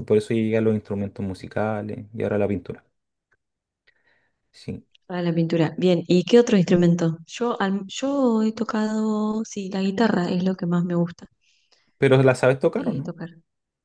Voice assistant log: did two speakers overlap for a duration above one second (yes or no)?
no